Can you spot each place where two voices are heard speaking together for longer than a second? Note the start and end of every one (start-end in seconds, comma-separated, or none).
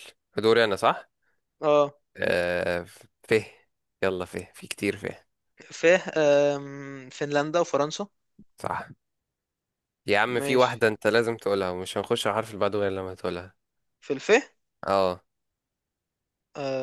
none